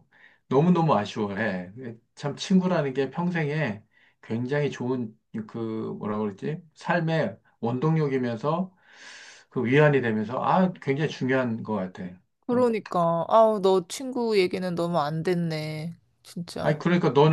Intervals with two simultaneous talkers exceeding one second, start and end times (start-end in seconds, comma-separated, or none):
none